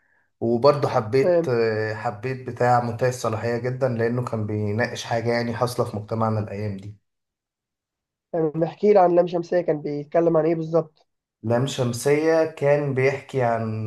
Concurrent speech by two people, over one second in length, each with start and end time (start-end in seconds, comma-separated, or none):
none